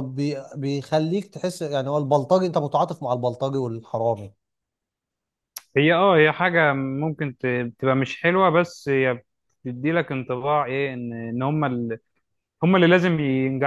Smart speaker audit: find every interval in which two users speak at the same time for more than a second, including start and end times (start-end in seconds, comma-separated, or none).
none